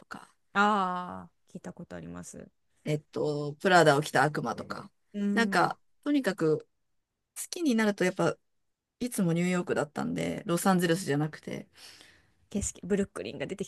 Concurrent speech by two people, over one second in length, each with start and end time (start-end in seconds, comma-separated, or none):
none